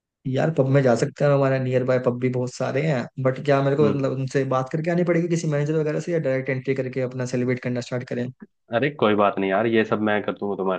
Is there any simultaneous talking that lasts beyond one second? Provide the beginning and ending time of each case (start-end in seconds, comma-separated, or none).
none